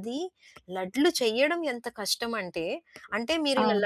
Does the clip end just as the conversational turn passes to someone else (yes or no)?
no